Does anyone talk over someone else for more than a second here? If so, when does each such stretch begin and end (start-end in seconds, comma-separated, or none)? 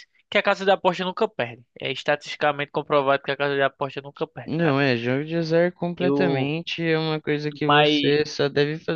none